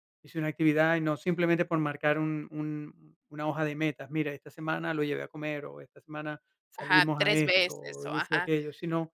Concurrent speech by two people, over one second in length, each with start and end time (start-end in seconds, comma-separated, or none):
6.8-8.5